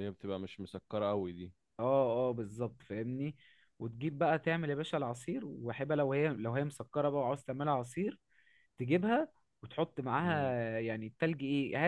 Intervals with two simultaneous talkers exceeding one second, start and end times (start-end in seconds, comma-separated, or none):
none